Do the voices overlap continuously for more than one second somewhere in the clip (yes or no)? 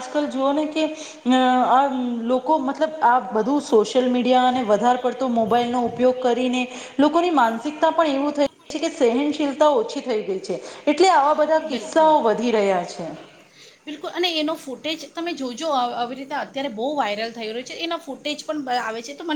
no